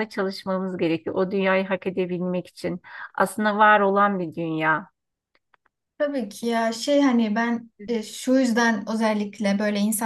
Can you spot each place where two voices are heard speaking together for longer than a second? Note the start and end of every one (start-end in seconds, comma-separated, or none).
none